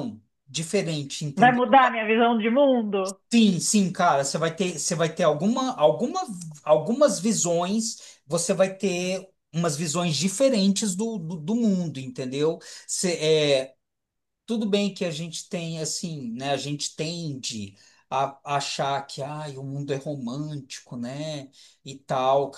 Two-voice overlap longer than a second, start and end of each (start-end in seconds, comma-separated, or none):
none